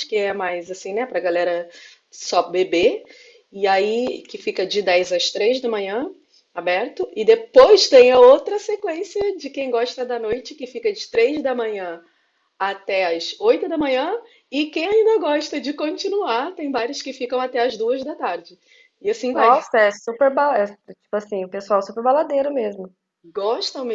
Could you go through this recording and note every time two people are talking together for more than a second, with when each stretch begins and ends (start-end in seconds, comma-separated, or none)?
none